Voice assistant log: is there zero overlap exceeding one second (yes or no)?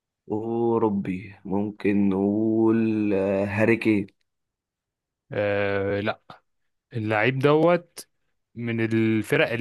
yes